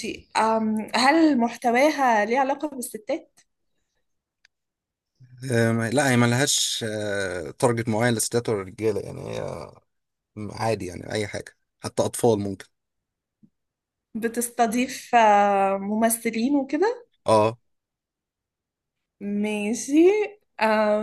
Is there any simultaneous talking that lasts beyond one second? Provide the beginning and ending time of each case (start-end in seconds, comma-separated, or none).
none